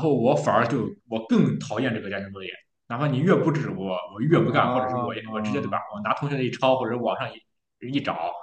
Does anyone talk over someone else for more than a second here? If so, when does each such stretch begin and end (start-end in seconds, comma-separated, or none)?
4.3-5.8